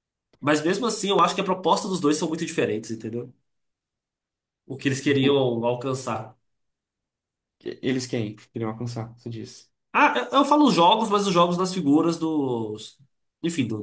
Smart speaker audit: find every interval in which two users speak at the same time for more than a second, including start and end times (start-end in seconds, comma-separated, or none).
none